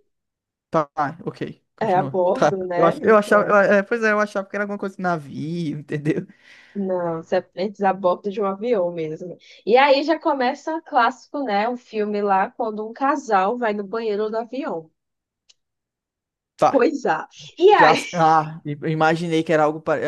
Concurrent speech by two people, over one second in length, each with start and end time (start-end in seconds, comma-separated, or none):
1.8-3.6